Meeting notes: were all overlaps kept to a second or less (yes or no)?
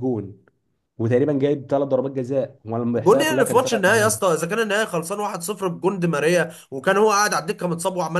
no